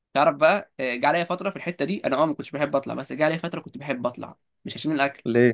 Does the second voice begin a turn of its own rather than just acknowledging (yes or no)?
no